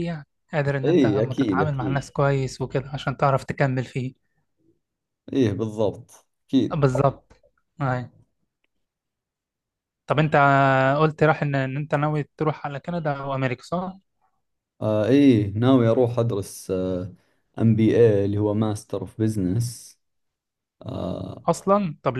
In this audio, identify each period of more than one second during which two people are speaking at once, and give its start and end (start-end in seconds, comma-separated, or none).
0.8-2.0